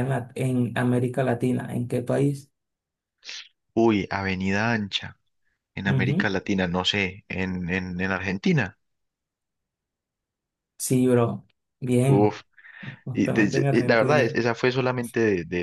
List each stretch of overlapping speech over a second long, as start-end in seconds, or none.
13.1-14.3